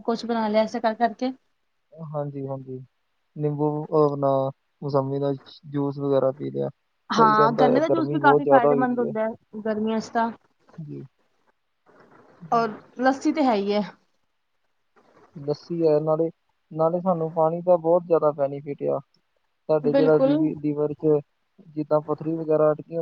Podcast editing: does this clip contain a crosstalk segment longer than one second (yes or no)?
yes